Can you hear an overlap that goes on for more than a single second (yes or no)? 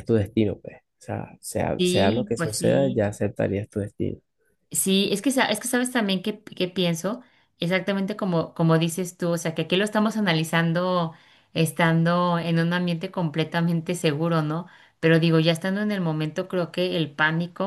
yes